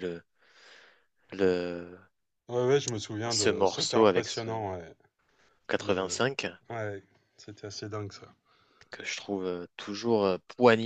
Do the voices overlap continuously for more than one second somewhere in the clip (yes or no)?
yes